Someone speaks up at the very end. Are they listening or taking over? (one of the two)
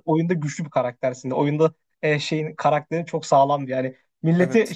listening